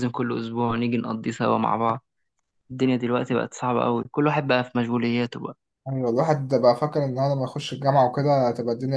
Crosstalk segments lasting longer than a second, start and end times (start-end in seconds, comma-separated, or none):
none